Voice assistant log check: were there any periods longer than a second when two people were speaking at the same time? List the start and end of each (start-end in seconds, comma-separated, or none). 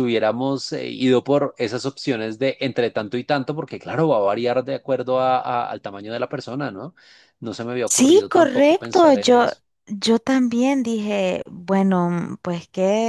7.9-9.5